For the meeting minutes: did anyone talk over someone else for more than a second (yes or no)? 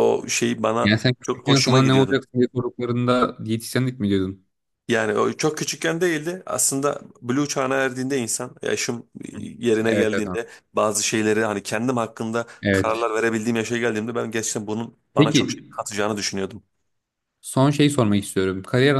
yes